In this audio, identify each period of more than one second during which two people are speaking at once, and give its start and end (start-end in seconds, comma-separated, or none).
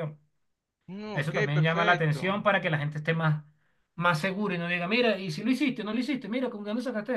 1.1-2.5